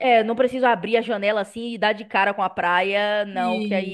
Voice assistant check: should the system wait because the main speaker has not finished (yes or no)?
yes